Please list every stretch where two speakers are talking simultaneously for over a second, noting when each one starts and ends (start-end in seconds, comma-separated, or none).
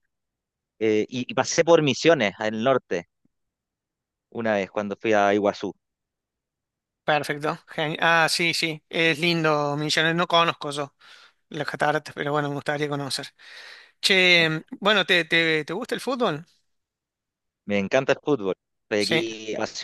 none